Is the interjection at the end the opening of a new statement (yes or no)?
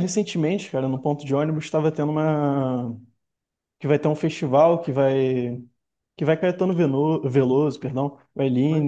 no